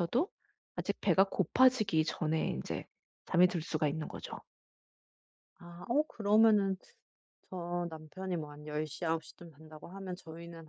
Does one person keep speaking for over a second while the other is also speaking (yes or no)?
no